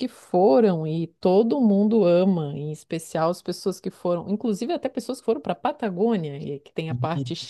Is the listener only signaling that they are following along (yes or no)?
yes